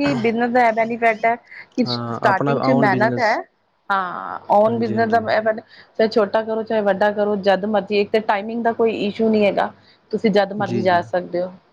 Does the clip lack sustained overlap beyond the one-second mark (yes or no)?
no